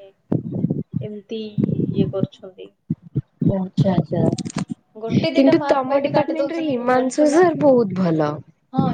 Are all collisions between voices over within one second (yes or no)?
no